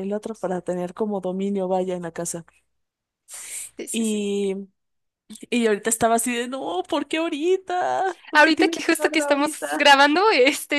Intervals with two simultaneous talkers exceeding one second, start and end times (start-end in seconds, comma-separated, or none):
8.3-9.9